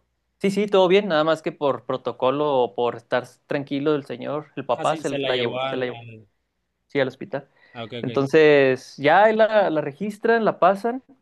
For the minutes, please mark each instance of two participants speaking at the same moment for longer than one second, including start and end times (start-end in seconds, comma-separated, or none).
4.7-6.0